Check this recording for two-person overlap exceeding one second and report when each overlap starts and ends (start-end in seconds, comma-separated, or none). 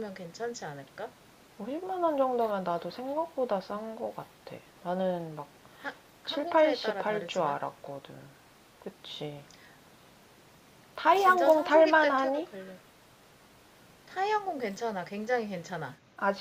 6.2-7.5, 11.1-12.5